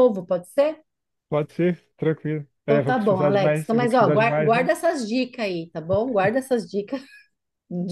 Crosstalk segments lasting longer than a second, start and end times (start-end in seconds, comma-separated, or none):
2.6-4.7